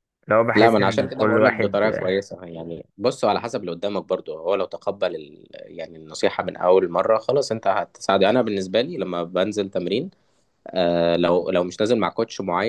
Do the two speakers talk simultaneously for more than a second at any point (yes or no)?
yes